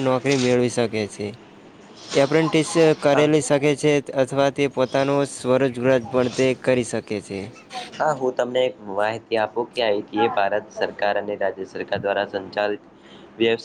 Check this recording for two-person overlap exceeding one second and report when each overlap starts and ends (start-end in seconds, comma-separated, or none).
none